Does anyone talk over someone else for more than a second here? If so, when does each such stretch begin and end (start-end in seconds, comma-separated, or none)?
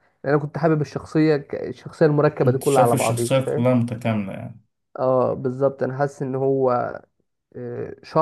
2.4-3.7